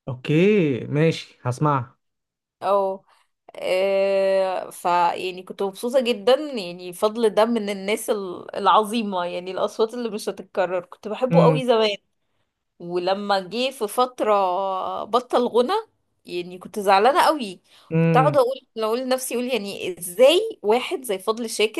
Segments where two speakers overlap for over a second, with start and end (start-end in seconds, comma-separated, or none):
none